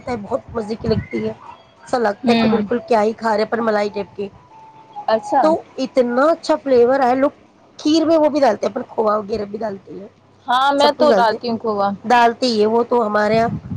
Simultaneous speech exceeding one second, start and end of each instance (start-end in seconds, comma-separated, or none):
none